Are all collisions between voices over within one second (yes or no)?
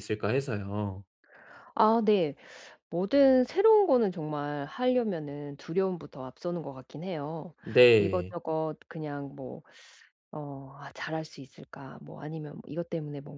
yes